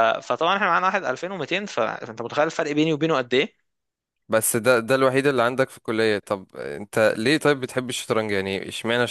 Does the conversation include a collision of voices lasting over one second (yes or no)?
no